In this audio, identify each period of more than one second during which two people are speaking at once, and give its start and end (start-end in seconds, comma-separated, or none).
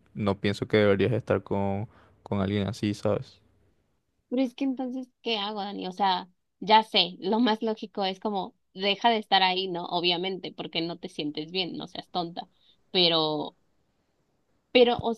none